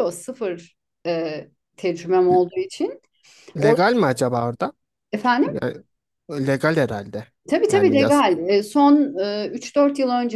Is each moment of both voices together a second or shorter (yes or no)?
yes